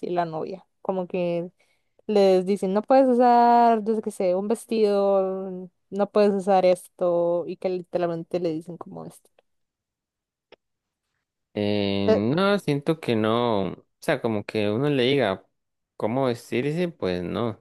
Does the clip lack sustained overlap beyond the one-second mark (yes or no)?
yes